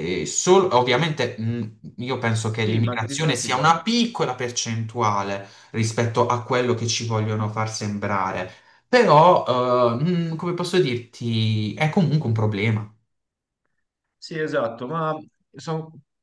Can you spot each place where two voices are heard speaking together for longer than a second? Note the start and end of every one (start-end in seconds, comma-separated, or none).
2.6-3.8